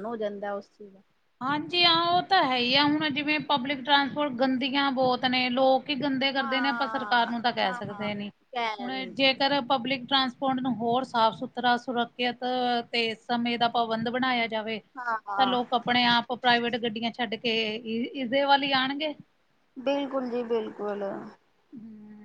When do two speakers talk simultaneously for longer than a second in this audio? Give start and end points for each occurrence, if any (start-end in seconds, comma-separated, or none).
6.4-8.1